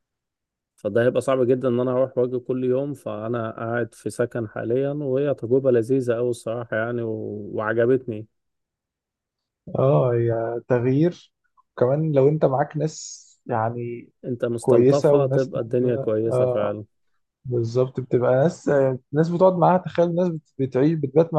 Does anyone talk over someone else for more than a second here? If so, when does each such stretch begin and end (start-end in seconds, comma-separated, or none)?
14.6-16.8